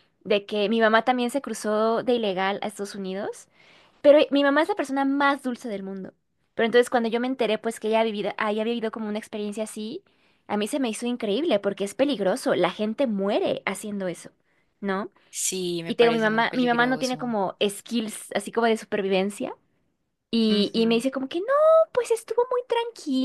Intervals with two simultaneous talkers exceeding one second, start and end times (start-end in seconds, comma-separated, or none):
15.8-17.3